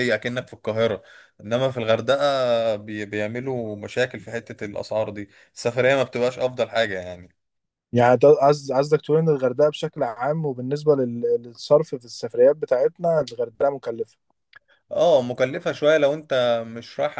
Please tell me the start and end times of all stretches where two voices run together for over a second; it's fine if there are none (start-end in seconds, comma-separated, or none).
none